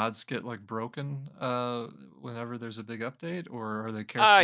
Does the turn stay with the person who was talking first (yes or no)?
no